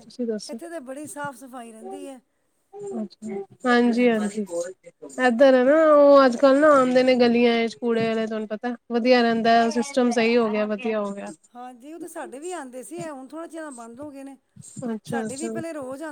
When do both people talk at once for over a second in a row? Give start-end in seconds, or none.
none